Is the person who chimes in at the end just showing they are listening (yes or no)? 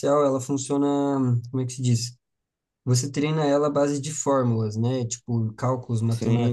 yes